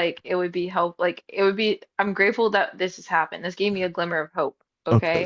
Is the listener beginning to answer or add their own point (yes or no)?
yes